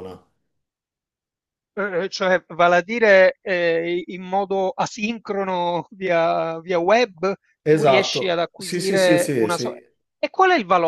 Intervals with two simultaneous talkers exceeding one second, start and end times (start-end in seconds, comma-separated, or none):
7.6-9.8